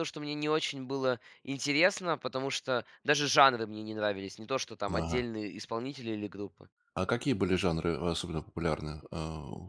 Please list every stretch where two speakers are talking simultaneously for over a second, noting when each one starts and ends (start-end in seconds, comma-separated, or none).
none